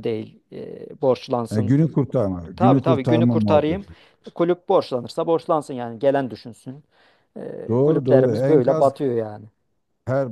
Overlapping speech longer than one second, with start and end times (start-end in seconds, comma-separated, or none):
2.5-3.9, 7.7-8.9